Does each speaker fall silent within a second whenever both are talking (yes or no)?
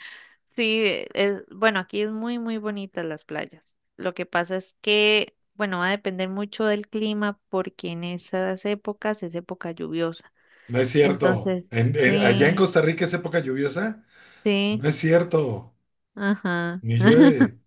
no